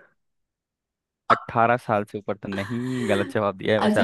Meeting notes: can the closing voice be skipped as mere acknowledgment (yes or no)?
no